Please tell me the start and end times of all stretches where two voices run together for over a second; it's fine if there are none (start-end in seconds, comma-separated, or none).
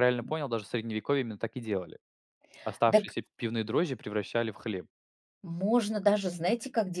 none